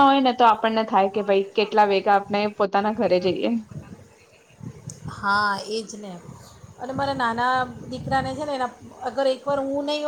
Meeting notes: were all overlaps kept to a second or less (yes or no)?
yes